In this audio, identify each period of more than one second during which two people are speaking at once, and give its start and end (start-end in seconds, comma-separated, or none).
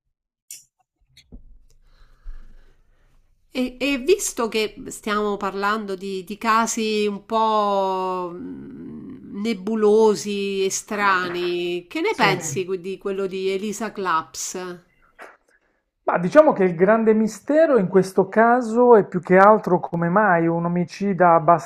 none